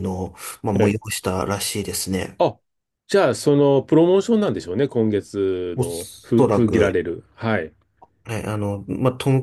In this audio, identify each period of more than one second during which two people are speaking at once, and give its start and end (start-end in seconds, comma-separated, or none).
5.8-7.0